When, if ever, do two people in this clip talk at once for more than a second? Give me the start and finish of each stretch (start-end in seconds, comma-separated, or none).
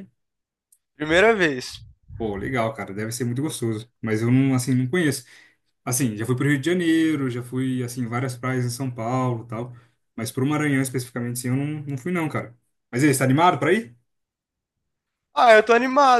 none